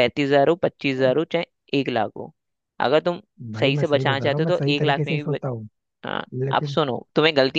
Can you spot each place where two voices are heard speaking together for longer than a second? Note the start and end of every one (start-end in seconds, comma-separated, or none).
3.6-5.5